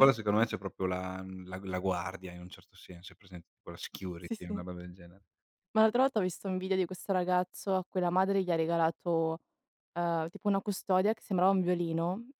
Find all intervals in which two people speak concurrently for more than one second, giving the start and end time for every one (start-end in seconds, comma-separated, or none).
none